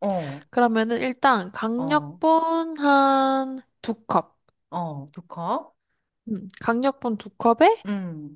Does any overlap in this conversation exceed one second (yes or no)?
no